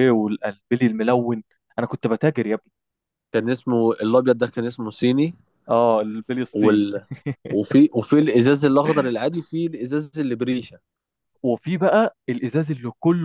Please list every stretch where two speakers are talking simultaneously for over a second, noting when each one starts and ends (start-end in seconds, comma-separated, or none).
none